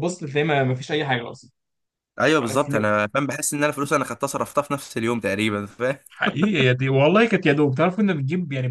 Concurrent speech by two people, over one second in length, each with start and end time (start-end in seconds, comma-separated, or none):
none